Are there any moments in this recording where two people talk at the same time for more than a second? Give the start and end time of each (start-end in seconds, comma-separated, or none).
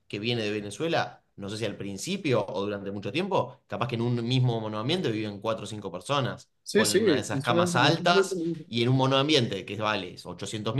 6.6-8.2